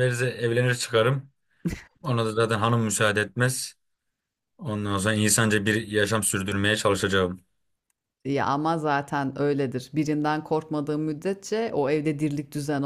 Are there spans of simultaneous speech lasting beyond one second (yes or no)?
no